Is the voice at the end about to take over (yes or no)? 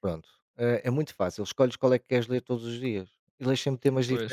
no